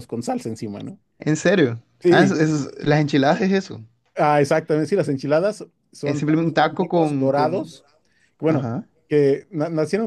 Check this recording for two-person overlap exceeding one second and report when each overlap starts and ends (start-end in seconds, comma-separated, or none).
6.0-7.7